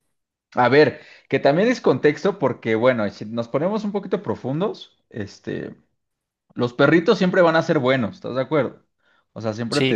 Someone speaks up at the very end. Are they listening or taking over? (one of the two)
listening